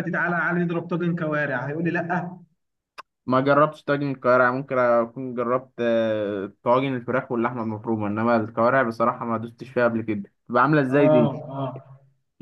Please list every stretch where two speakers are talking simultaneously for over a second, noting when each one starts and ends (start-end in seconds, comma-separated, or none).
none